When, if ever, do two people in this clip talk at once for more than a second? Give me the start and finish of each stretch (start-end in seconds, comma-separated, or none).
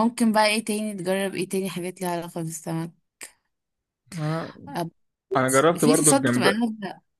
5.5-6.7